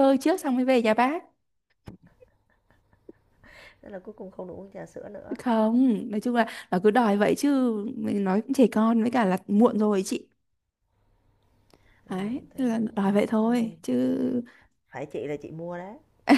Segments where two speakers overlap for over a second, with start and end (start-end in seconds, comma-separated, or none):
12.1-13.8